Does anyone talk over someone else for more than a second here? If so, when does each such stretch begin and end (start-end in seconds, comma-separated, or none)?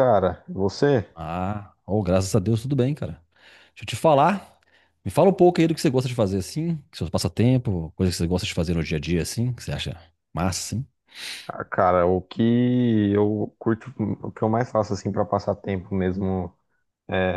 none